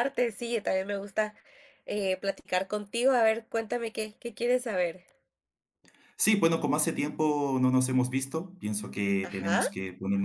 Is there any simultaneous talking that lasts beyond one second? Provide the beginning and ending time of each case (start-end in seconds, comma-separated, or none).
none